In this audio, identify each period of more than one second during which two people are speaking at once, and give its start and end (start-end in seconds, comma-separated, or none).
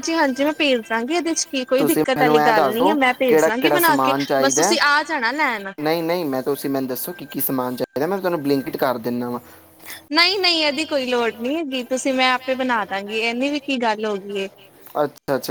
1.8-4.8